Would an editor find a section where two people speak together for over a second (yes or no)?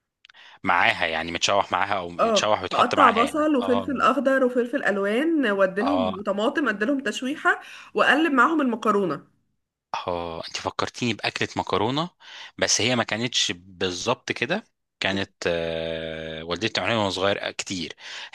yes